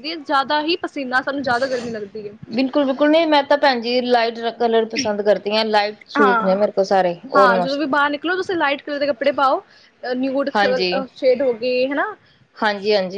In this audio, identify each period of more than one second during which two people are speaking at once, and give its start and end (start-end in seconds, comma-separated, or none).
6.2-7.8